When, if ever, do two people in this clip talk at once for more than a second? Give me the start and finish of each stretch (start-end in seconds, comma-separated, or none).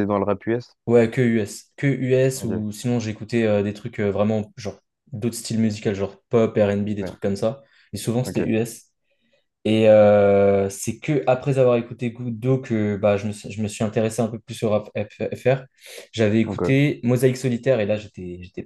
none